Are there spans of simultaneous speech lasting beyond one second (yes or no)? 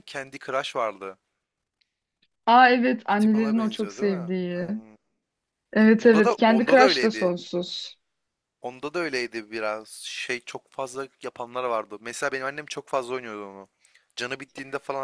yes